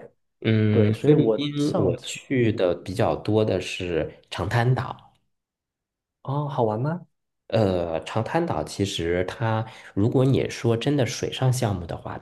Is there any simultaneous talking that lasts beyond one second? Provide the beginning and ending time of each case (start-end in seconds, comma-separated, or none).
0.7-2.6